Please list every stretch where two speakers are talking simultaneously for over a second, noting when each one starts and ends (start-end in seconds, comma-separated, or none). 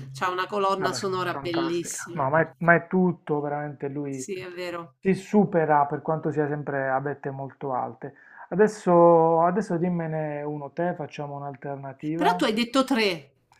0.8-2.8